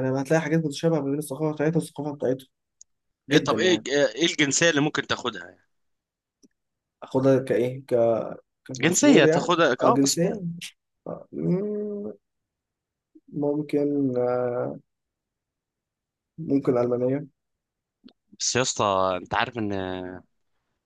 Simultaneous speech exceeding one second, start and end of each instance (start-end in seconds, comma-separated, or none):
8.8-10.2